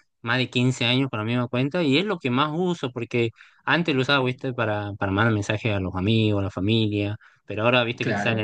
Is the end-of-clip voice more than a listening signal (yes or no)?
no